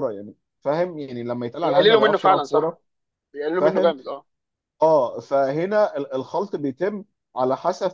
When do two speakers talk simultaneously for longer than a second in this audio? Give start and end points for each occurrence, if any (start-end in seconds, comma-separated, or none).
1.6-2.8